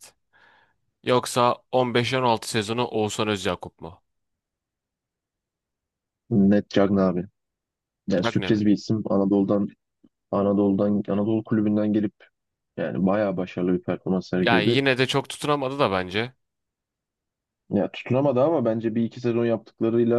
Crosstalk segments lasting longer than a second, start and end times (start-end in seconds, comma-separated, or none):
none